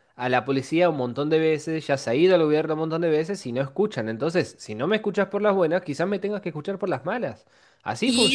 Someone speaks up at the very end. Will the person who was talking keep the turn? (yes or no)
no